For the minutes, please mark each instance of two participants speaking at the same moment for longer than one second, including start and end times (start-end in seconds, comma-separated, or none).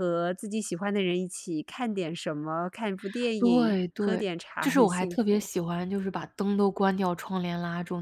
3.4-5.5